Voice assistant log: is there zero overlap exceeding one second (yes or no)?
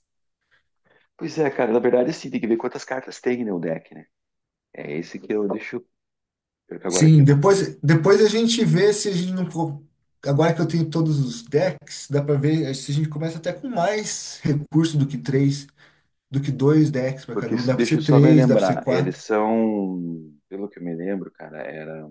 no